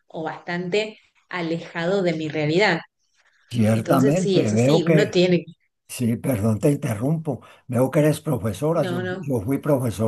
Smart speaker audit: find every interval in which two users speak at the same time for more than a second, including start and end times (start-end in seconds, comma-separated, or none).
3.7-5.2